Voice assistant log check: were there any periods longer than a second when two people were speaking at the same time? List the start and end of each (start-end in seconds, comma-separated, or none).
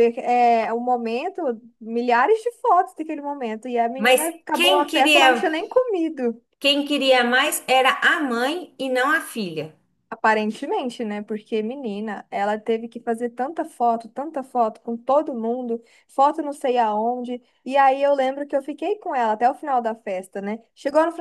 4.0-5.5